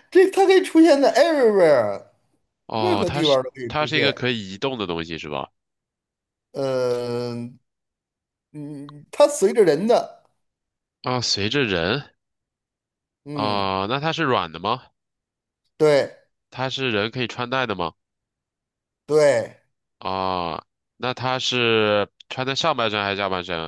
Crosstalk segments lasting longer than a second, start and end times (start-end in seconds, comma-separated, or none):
2.7-4.2